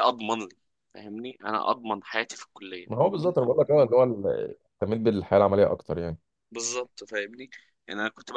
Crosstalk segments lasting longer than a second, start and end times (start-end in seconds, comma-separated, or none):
none